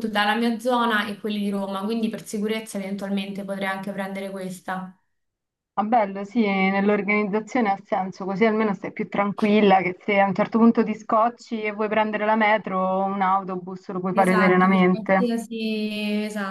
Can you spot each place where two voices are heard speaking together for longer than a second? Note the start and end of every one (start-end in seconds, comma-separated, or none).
14.1-15.4